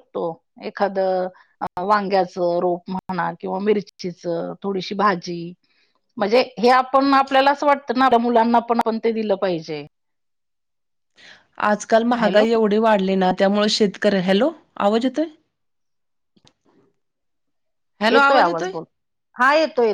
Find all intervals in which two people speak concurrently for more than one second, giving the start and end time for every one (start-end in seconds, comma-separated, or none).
none